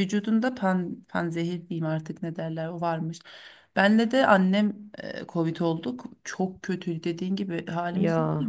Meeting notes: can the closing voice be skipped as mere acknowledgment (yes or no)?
yes